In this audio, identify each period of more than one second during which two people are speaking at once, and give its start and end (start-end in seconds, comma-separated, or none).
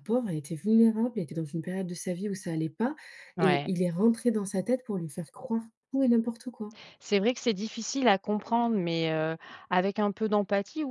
none